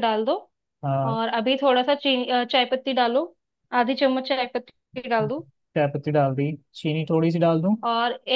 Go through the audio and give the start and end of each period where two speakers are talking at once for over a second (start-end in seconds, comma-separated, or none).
none